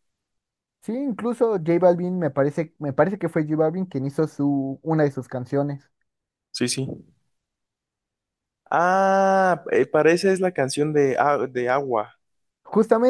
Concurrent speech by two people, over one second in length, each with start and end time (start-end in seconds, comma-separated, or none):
none